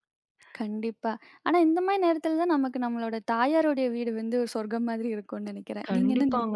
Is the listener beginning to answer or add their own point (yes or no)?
yes